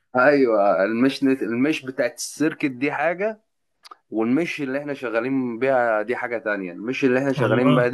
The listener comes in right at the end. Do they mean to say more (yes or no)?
no